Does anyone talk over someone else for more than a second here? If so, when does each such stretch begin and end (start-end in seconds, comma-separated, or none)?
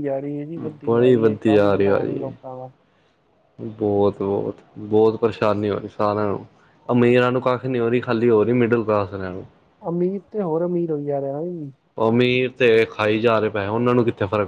0.9-2.3